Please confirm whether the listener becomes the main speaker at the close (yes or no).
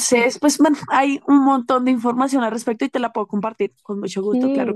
yes